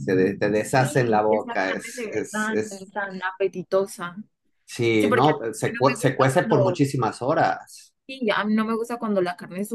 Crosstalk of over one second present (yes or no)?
yes